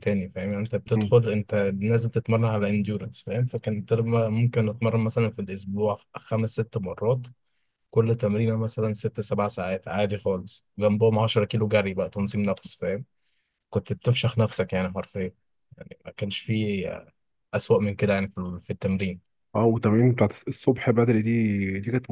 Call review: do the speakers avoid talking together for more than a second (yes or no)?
yes